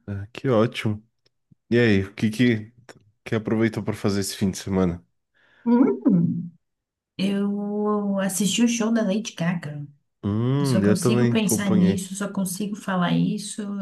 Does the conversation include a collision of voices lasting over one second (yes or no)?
yes